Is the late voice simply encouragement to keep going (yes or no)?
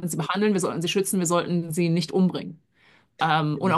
yes